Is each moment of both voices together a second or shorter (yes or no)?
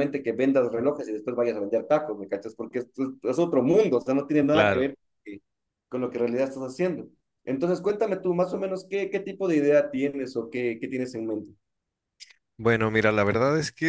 yes